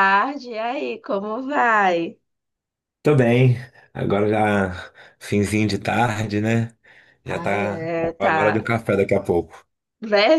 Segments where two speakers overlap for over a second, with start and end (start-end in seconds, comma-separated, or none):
7.3-8.7